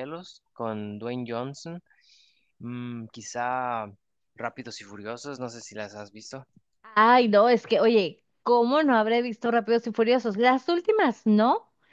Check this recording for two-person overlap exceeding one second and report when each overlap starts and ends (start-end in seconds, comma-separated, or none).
none